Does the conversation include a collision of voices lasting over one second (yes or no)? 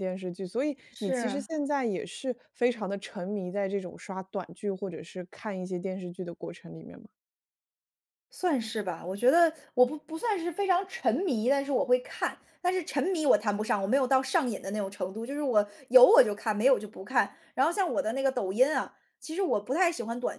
no